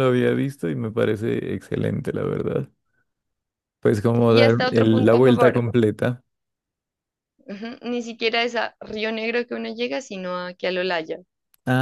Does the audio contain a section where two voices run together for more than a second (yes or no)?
yes